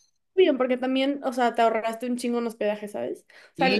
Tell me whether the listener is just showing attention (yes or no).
no